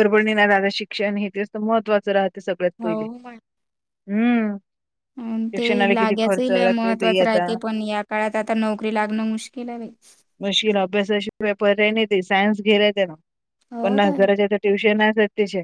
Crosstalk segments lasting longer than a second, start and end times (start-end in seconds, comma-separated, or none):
5.6-7.5